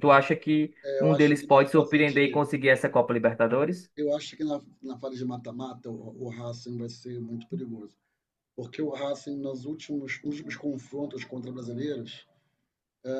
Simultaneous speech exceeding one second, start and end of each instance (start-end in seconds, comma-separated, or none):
0.8-2.4